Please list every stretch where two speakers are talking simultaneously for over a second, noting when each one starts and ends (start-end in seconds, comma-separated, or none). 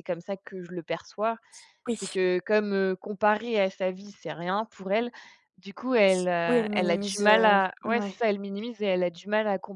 6.5-8.2